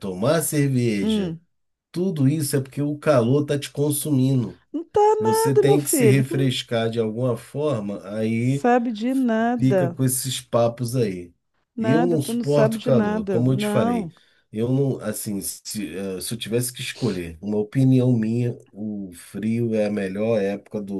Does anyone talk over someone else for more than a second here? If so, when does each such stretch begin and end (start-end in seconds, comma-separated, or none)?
5.2-6.5, 11.8-14.1